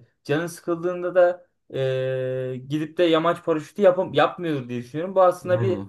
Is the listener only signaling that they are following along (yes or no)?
yes